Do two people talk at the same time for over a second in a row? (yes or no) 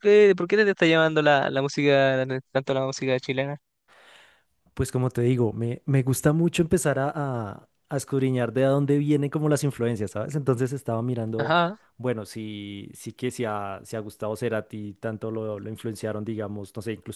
no